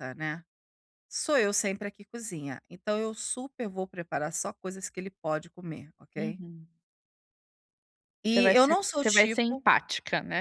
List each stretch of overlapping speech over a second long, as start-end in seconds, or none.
8.3-9.6